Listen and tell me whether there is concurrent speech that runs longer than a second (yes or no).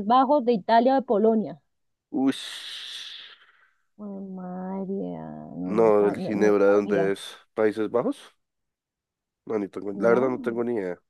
yes